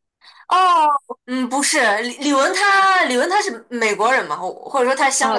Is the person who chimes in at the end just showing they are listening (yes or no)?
no